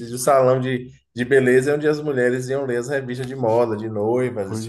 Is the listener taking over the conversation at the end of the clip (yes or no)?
yes